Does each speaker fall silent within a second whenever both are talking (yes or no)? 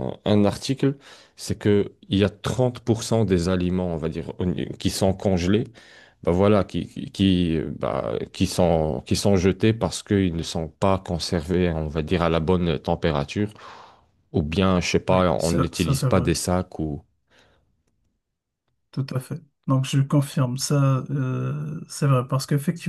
no